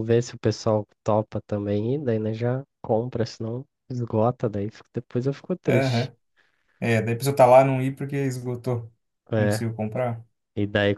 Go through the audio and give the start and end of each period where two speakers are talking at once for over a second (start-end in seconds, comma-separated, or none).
none